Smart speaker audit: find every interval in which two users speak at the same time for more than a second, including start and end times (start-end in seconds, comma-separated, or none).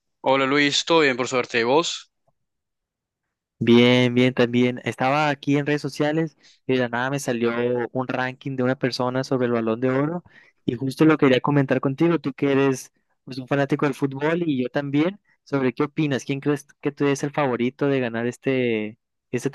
none